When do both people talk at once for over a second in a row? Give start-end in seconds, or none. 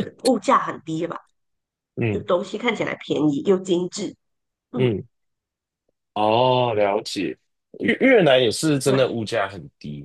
none